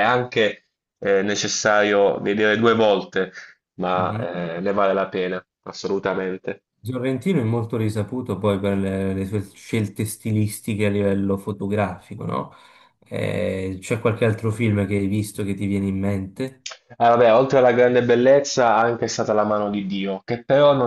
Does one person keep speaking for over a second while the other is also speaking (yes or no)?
no